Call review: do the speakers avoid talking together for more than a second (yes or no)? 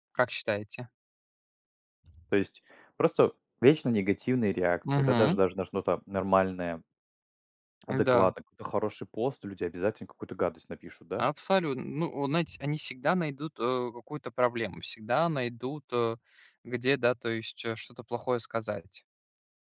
yes